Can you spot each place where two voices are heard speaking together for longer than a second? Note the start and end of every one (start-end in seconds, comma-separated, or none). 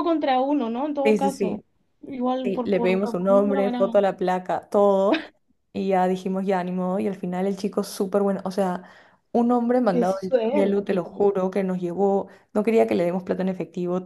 2.4-4.0, 9.9-11.3